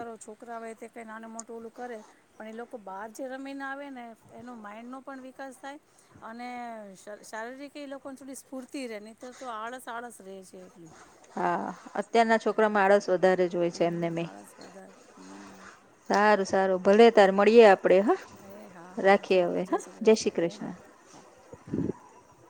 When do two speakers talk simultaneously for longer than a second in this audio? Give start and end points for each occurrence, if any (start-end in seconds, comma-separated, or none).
none